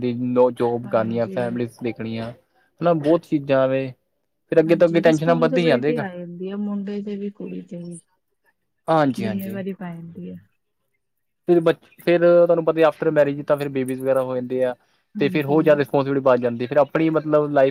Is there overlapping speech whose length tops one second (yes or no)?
yes